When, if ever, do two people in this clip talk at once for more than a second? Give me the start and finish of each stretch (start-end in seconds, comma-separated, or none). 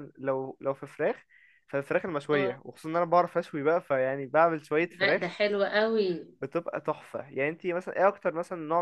none